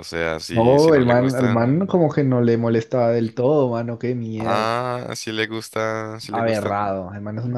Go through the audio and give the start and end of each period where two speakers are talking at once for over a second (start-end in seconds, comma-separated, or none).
0.5-2.1